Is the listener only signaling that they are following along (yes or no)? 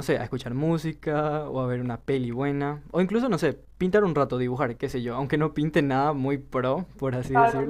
no